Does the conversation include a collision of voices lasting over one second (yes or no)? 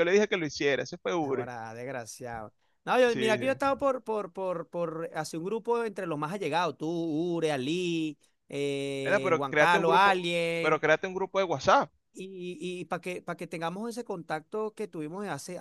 yes